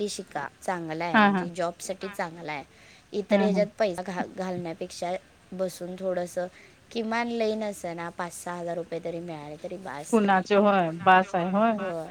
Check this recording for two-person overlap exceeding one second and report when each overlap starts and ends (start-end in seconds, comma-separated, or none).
none